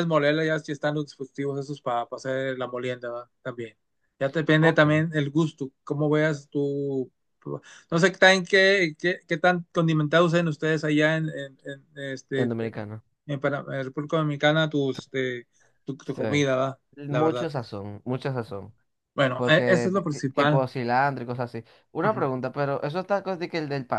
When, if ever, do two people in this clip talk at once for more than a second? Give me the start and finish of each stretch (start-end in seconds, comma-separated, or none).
19.3-20.7